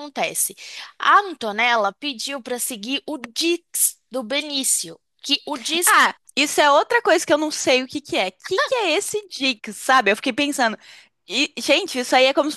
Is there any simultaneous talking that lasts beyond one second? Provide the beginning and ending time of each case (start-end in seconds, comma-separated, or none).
none